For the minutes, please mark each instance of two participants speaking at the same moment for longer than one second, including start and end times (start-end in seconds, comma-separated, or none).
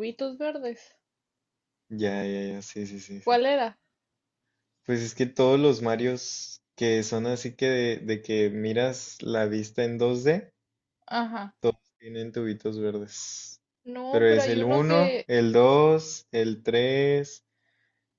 14.1-15.3